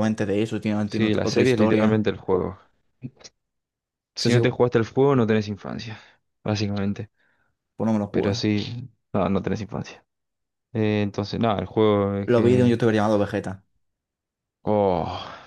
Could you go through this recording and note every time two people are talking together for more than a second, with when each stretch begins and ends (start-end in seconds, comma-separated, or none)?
0.8-2.2